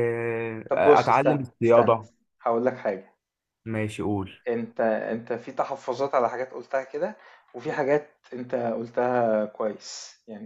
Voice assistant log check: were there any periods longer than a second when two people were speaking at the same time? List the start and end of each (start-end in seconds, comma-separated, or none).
0.7-1.9